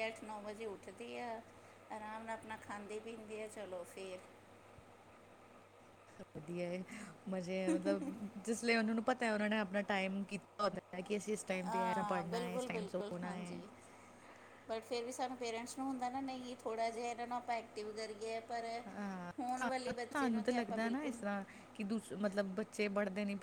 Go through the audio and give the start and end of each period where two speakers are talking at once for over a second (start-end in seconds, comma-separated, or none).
11.7-13.6, 19.4-21.1